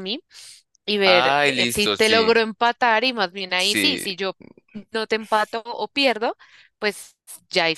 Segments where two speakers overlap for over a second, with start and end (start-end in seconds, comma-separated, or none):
1.0-2.4